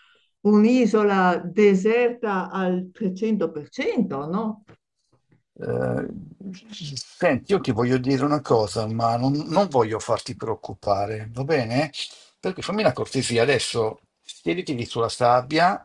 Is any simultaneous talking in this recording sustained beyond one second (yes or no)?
no